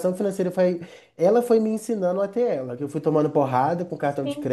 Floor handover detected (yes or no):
no